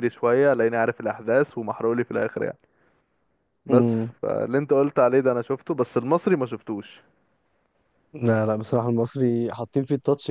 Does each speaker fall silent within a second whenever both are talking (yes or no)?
yes